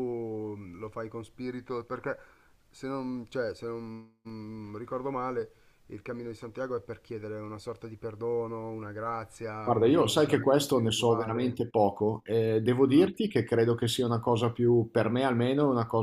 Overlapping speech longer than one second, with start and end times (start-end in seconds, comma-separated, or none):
9.6-11.6